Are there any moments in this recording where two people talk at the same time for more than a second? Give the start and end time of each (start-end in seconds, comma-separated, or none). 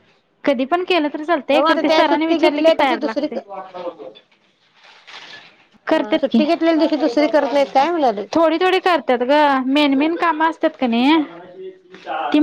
1.5-3.4